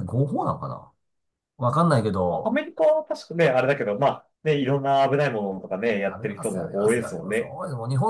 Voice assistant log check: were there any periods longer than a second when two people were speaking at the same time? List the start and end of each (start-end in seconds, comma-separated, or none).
6.0-7.6